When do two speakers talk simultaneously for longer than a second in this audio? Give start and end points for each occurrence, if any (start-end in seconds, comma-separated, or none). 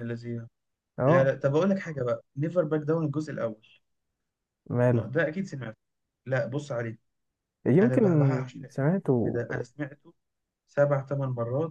none